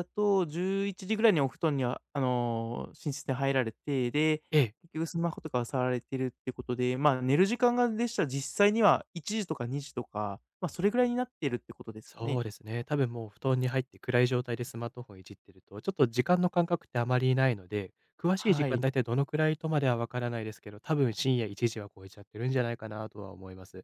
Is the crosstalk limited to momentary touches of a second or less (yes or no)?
yes